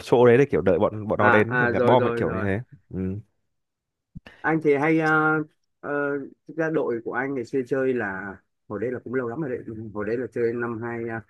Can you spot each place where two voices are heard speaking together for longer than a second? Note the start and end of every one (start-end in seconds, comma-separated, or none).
1.2-2.5